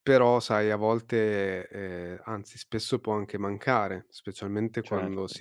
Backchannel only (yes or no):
yes